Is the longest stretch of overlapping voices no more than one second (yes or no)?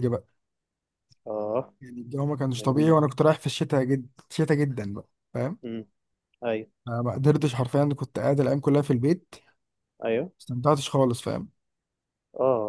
yes